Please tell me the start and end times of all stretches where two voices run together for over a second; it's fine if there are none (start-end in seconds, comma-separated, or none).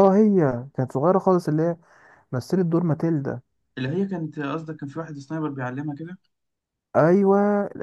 none